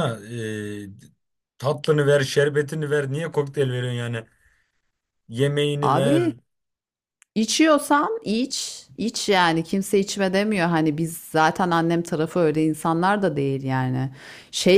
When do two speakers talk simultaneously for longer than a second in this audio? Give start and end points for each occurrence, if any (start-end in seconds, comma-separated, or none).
none